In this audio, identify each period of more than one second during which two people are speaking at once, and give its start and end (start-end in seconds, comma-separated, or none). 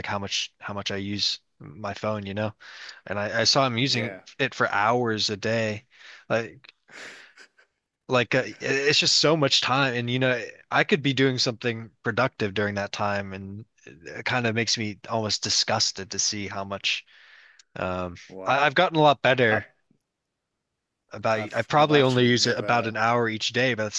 21.4-23.0